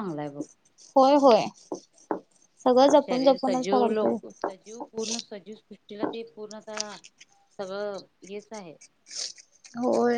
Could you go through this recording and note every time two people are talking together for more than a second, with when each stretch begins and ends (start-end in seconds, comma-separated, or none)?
3.0-4.4